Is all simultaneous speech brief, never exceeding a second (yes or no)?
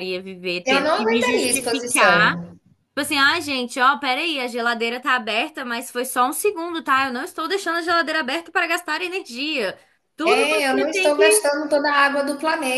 no